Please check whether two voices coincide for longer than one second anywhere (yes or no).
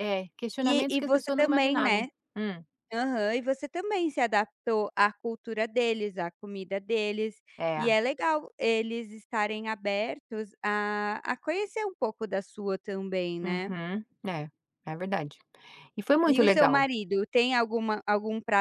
yes